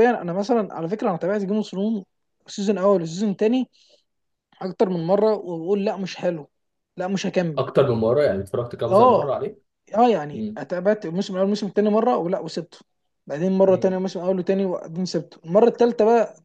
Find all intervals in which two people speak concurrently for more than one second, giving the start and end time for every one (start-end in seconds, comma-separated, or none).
none